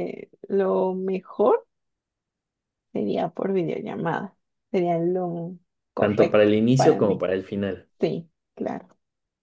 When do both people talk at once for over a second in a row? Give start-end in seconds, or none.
6.0-7.2